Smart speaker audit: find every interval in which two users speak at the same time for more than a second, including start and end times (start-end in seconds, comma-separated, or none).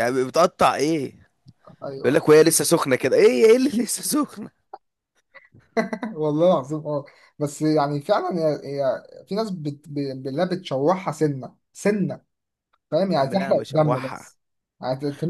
13.2-14.3